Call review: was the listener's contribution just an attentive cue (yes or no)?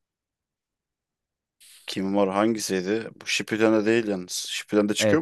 no